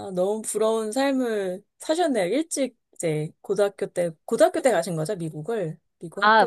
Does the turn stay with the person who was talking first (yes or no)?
no